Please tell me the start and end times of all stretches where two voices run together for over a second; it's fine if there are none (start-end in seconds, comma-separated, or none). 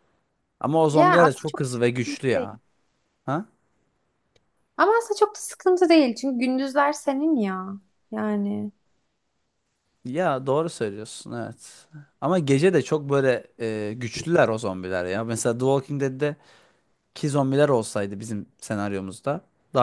0.9-2.5